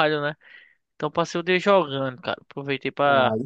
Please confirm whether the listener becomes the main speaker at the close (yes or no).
no